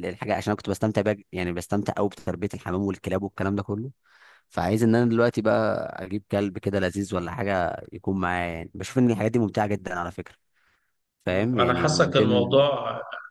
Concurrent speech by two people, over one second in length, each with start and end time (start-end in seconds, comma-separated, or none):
11.3-12.6